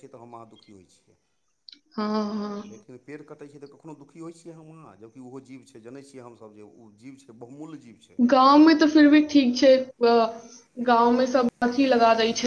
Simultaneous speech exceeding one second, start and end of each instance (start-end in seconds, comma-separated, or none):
none